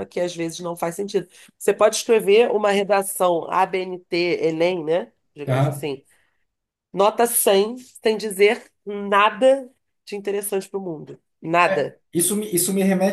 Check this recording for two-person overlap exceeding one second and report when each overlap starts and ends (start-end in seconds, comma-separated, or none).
none